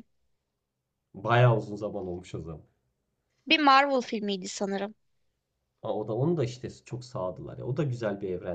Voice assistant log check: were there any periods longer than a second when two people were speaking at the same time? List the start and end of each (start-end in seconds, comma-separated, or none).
none